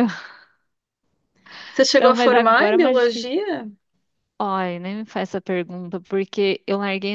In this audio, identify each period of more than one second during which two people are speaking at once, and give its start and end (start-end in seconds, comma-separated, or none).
1.9-3.4